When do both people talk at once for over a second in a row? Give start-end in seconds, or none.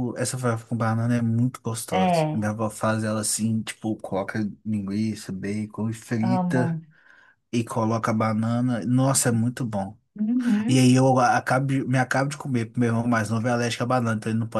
none